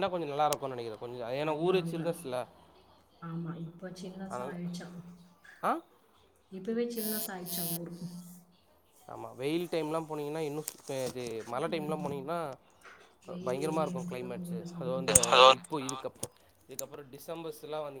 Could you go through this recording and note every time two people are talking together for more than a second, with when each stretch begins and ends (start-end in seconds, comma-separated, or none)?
13.5-15.2